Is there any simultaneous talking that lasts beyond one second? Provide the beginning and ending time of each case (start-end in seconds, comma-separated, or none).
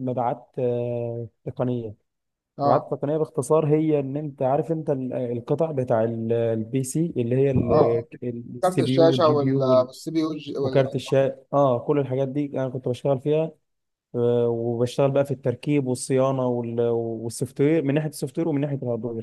8.6-9.9